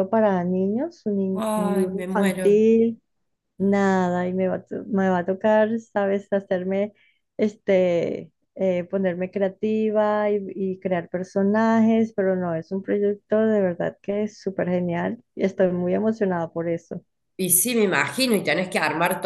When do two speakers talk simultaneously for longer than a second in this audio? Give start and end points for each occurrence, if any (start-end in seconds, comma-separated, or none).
1.3-2.6